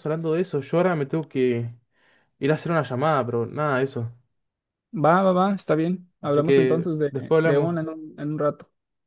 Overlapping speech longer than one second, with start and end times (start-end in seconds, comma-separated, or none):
6.2-7.8